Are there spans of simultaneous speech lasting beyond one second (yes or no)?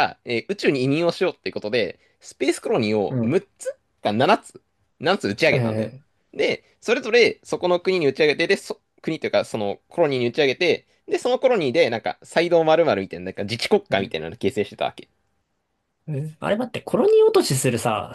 no